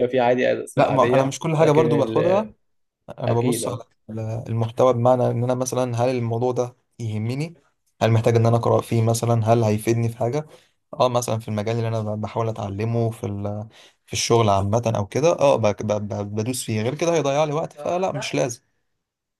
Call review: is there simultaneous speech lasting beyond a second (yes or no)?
yes